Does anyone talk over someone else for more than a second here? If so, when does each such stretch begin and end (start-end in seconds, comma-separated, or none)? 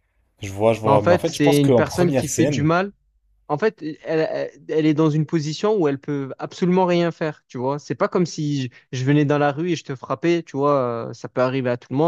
0.8-2.7